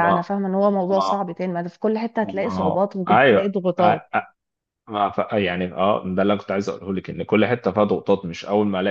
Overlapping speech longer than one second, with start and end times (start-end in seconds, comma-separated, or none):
2.2-3.5